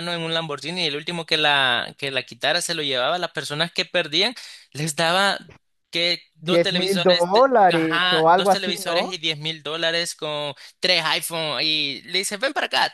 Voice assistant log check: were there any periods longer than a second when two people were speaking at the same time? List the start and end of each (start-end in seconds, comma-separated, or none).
6.5-9.2